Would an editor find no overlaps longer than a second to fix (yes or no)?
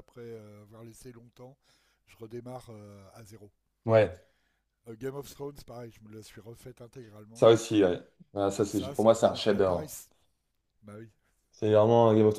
no